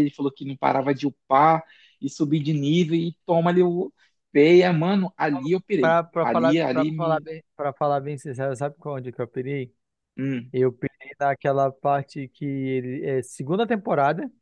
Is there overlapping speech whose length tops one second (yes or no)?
yes